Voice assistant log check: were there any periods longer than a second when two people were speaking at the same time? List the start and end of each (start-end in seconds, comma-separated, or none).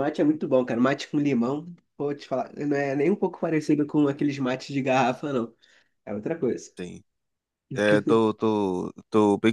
none